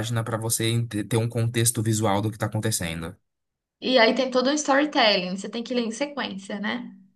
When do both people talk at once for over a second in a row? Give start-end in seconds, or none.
none